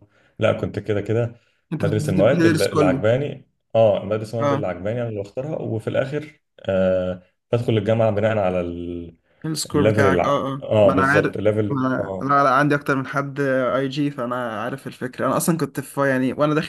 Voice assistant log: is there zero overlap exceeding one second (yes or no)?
no